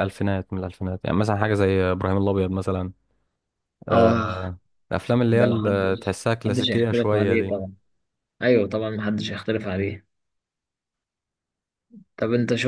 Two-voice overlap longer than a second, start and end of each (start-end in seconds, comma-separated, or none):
5.3-7.6